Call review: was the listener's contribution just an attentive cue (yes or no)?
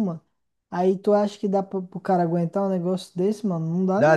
no